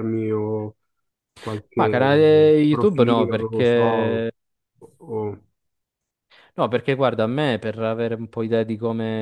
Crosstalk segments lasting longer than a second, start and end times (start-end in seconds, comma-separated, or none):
2.7-4.3